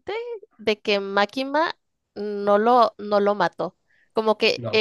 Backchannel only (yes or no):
yes